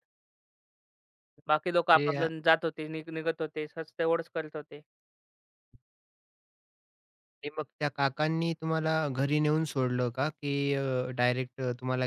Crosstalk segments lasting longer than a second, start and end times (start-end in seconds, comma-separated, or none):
none